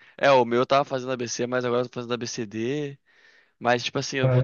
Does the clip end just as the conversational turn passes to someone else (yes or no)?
no